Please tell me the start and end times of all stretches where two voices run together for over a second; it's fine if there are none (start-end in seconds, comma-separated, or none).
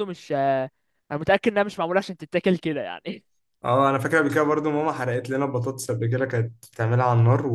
none